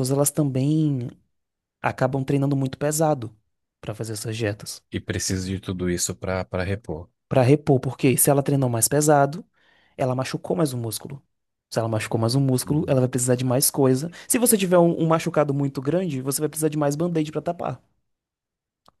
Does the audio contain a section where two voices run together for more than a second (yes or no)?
no